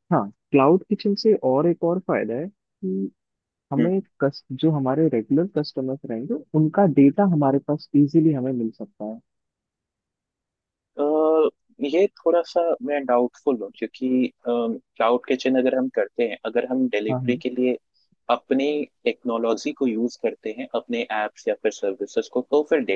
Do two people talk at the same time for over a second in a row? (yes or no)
no